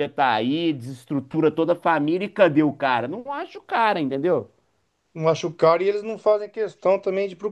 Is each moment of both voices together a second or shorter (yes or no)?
yes